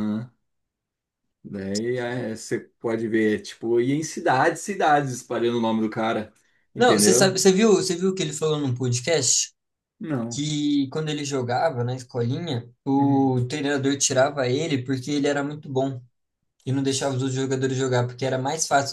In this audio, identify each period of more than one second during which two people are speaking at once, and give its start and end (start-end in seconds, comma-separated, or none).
none